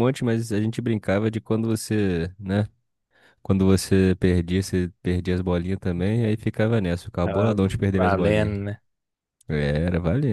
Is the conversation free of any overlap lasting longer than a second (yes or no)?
no